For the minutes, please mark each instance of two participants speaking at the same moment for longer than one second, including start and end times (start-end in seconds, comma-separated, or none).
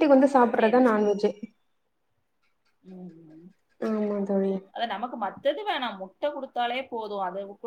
none